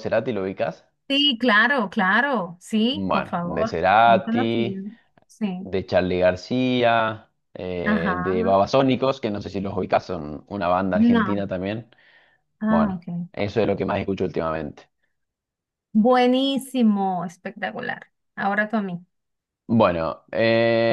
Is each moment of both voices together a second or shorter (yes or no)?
no